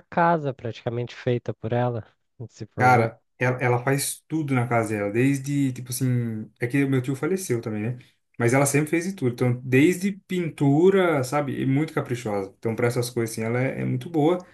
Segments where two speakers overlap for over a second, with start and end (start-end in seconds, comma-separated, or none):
none